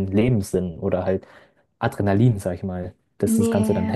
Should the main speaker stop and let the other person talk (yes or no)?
yes